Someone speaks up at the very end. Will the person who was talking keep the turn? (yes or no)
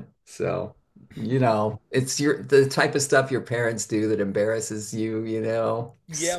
no